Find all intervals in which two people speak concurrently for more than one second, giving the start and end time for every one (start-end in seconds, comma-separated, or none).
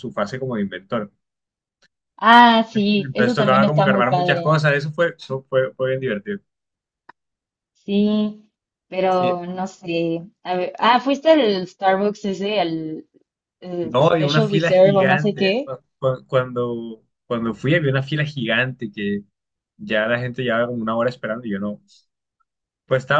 2.9-4.6, 13.8-15.7